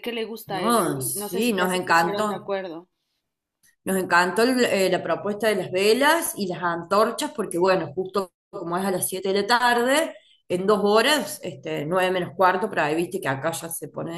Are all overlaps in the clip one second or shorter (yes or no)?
no